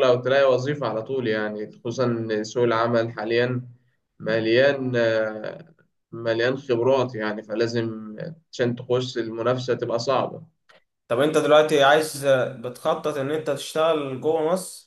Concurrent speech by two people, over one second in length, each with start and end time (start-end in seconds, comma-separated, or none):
none